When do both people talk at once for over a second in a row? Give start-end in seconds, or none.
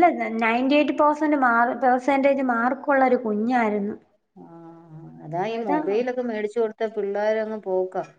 none